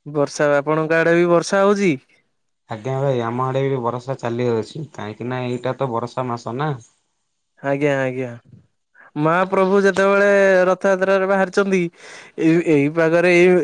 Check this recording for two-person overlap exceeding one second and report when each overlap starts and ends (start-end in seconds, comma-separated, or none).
none